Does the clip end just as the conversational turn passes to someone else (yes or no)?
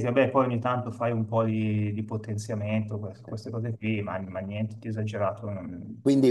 yes